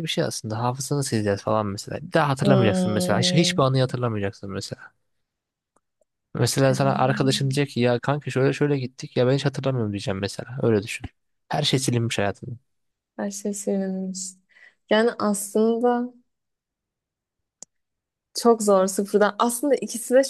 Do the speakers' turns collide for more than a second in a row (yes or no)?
yes